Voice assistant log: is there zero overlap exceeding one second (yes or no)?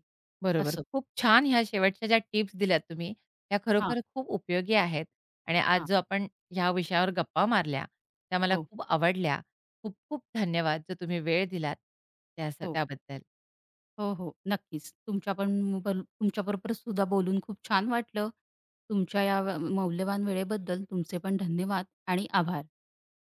yes